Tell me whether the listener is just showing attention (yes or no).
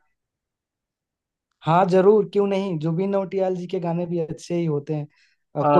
no